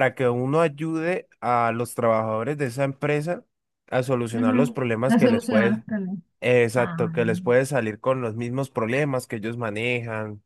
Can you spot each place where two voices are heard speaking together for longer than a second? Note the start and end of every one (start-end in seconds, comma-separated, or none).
4.3-5.8